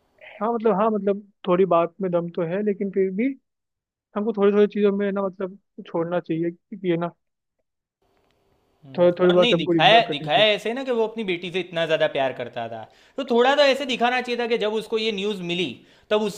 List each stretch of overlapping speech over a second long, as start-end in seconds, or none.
9.0-10.4